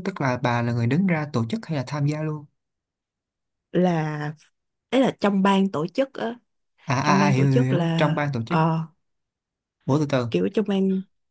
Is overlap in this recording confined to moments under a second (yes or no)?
no